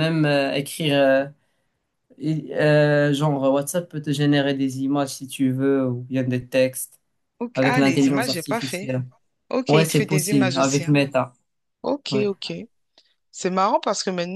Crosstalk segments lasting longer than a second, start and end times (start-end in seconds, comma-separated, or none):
7.5-8.9, 9.7-10.9